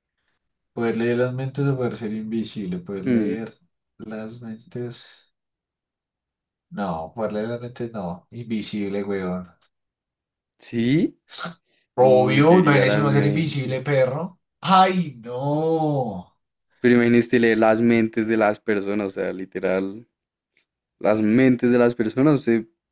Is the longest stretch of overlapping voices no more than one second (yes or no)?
no